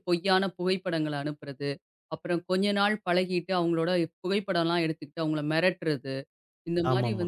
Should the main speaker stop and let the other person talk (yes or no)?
no